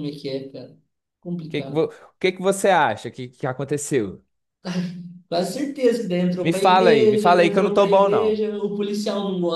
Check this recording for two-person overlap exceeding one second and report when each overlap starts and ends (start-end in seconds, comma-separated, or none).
6.4-8.4